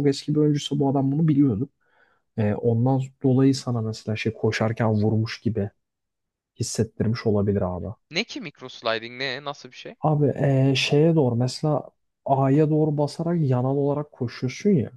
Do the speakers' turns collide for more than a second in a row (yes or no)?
no